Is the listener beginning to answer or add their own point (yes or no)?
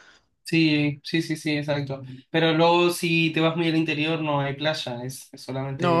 yes